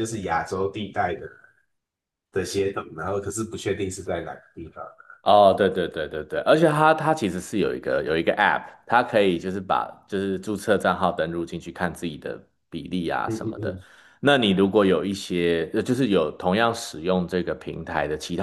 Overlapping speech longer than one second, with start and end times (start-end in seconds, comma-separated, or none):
none